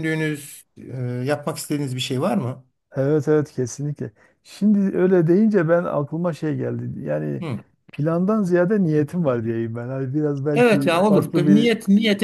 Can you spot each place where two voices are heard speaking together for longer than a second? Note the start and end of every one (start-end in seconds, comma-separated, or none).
10.5-11.7